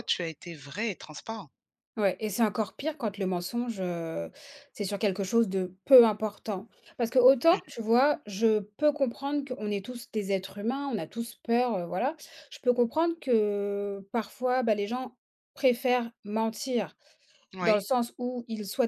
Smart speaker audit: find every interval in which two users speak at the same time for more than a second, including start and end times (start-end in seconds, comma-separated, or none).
none